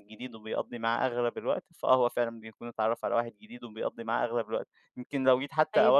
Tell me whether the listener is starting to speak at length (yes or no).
no